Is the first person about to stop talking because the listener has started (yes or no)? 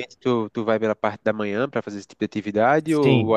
yes